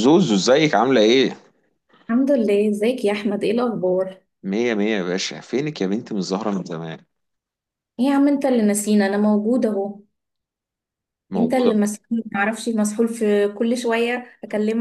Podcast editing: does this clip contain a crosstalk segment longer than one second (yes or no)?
no